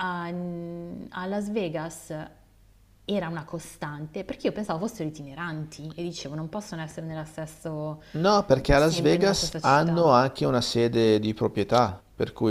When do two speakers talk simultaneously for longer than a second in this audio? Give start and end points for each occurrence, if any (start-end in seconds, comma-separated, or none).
8.7-10.1